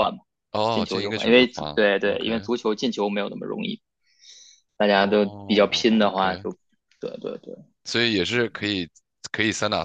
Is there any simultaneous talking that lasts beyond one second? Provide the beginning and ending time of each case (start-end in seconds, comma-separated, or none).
0.7-2.5, 4.9-6.5